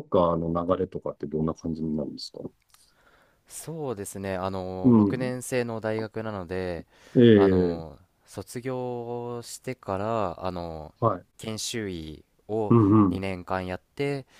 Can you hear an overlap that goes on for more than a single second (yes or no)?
no